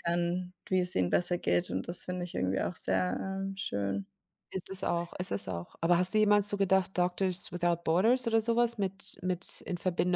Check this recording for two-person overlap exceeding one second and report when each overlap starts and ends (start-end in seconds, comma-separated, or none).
none